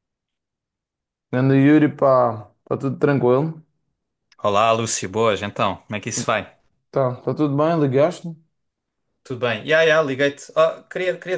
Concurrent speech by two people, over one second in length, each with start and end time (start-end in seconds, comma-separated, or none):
none